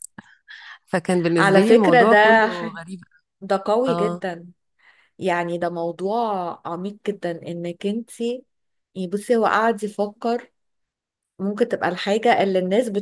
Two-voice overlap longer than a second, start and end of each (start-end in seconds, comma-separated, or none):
1.4-2.7